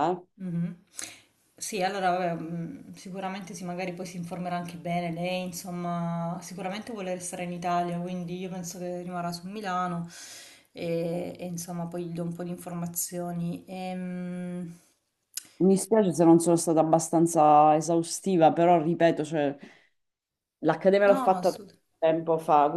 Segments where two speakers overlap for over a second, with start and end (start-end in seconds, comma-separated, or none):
none